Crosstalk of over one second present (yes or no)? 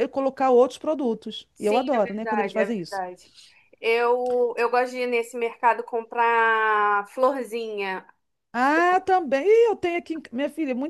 yes